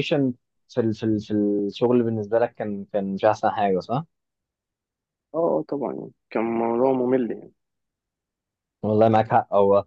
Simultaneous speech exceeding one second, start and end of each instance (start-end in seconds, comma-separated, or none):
none